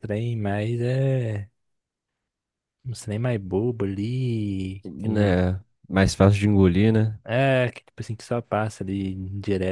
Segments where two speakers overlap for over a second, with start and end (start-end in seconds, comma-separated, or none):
none